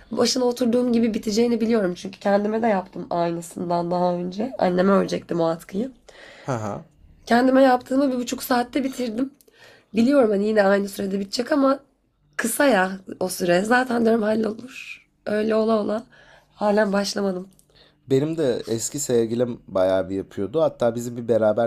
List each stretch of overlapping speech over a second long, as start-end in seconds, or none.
none